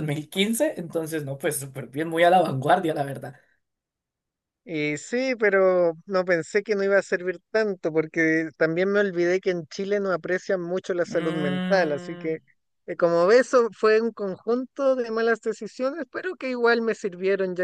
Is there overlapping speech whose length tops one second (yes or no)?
yes